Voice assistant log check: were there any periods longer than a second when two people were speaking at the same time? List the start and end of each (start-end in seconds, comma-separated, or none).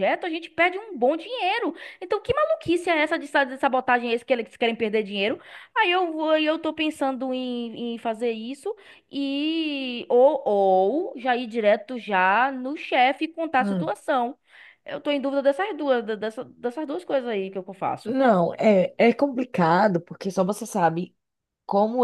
none